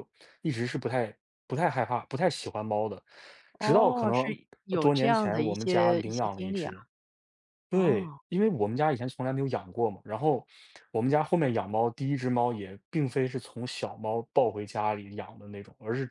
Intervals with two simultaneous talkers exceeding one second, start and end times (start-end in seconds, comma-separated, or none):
3.6-6.7